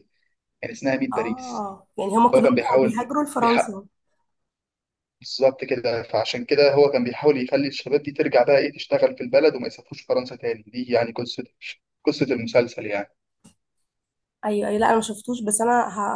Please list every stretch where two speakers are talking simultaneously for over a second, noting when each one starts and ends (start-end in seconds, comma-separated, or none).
2.3-3.8